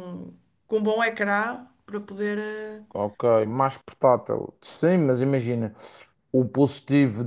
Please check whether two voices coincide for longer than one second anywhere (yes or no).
no